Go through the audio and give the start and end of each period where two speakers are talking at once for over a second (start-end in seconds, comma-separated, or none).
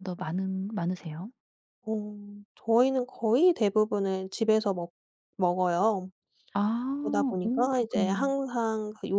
7.0-8.3